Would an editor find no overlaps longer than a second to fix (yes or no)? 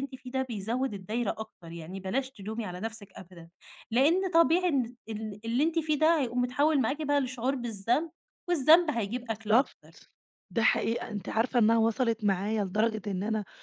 yes